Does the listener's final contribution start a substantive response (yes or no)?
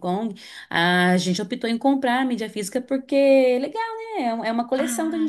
yes